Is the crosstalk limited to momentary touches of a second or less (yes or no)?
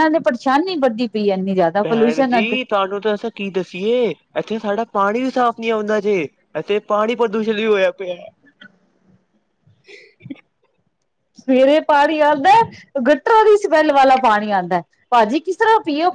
yes